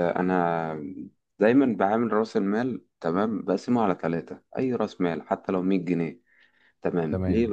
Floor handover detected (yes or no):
no